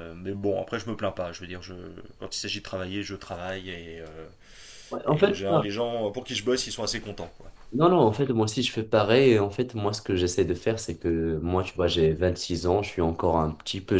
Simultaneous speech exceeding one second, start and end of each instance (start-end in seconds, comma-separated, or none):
none